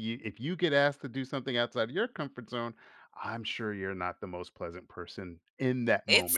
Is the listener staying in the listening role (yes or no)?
no